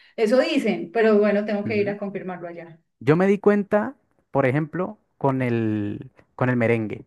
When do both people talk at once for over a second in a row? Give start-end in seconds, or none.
none